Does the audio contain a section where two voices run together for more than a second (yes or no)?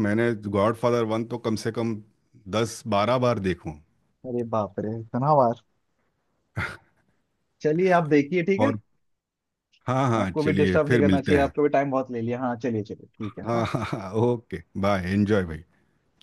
yes